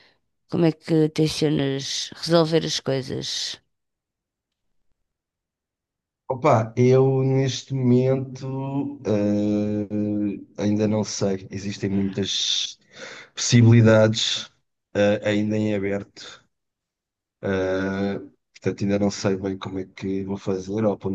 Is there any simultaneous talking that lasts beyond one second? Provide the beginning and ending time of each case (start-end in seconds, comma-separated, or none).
none